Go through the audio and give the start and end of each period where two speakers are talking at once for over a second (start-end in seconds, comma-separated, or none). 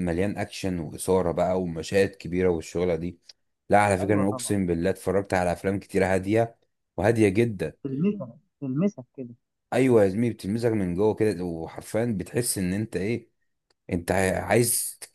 none